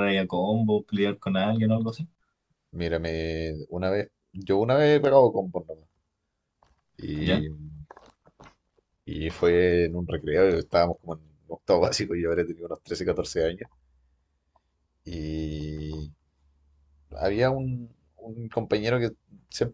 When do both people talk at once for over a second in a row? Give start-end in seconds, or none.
none